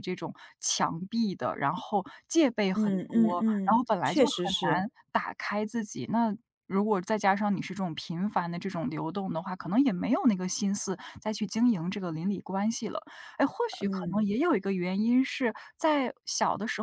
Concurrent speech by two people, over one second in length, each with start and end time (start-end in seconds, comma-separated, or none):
2.7-4.9